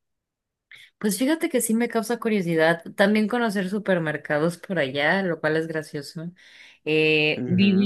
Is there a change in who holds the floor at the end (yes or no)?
yes